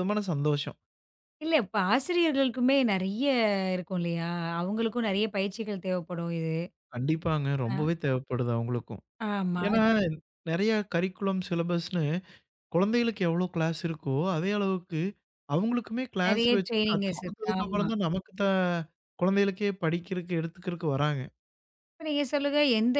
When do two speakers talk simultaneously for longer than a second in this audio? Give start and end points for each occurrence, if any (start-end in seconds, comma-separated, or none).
16.2-17.9